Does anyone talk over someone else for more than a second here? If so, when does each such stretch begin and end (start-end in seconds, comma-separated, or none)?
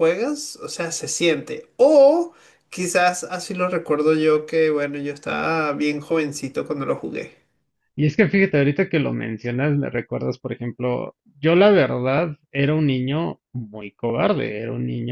none